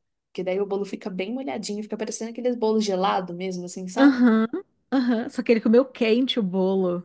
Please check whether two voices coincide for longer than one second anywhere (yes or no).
no